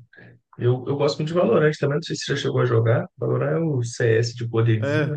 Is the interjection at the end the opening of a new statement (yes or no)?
yes